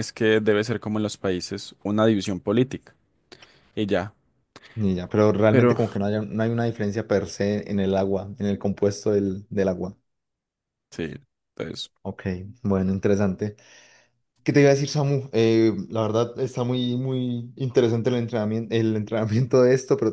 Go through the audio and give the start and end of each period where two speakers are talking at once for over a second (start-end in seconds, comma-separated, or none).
none